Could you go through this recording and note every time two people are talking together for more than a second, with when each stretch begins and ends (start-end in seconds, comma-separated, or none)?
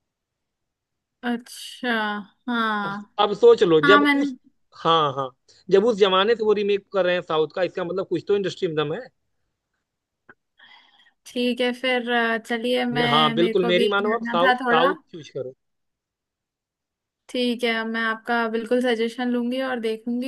12.9-14.9